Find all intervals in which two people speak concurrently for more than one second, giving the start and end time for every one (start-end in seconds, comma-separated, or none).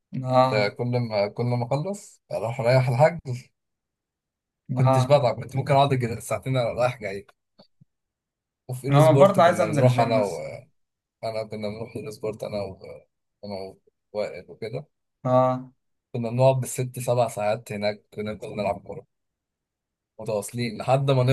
8.9-10.3